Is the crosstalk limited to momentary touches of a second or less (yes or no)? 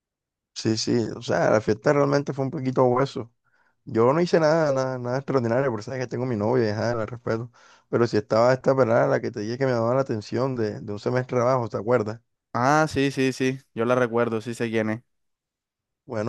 yes